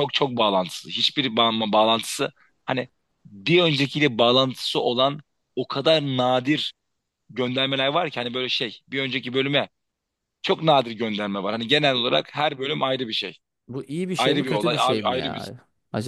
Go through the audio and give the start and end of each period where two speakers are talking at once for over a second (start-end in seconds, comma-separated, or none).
14.2-15.5